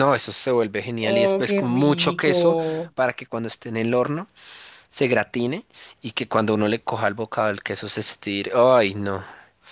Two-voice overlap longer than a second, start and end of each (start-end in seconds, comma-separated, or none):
1.0-2.6